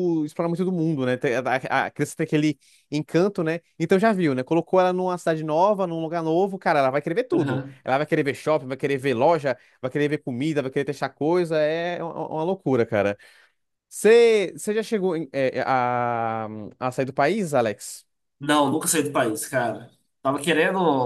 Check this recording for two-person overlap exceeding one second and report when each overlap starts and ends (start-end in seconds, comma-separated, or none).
none